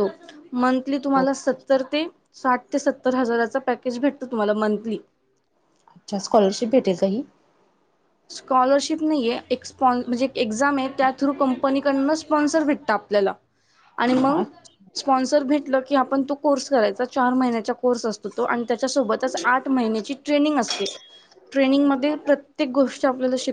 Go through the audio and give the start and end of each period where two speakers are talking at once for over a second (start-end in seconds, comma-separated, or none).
none